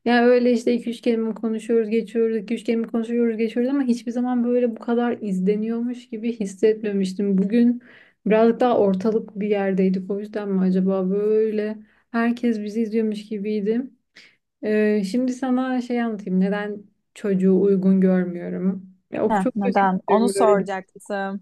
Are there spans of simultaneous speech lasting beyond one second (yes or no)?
yes